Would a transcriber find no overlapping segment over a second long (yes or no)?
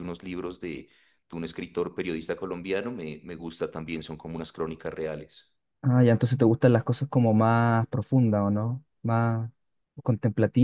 yes